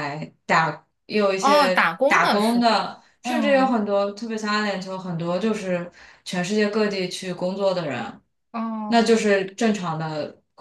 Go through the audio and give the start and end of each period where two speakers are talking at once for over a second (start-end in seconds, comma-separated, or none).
1.4-3.8